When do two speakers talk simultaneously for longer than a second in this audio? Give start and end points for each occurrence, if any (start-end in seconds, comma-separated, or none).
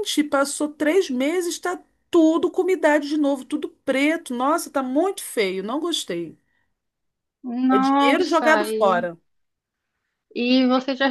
7.7-9.1